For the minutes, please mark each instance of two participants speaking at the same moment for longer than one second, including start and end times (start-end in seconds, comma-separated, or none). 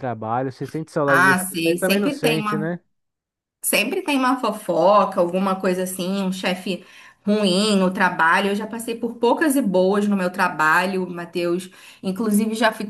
1.1-2.7